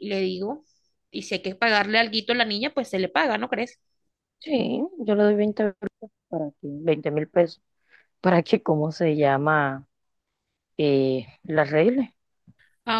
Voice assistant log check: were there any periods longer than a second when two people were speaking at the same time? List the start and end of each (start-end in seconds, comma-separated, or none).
none